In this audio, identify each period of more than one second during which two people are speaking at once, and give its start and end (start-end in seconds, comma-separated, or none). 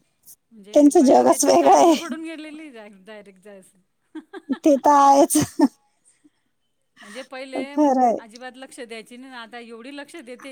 0.7-2.1